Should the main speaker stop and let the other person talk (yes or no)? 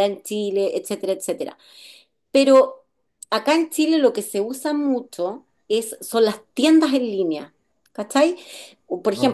no